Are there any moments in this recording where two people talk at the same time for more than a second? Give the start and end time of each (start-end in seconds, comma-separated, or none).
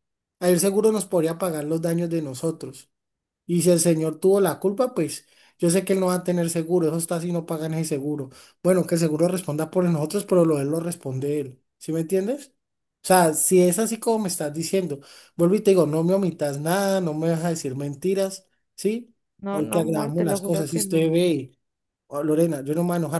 19.4-21.1